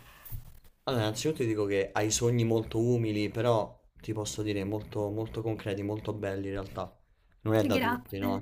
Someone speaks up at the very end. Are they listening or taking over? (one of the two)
listening